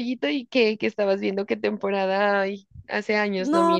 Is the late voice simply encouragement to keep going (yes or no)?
no